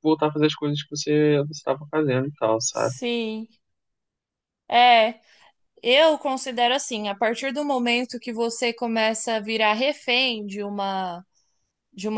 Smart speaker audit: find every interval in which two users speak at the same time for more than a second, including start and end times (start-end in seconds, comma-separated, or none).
none